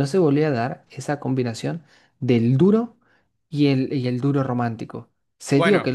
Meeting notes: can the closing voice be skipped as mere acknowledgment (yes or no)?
yes